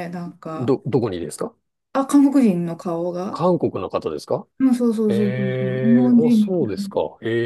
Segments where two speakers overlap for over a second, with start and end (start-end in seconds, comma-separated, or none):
5.1-6.9